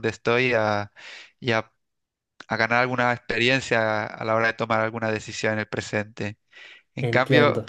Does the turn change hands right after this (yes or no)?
no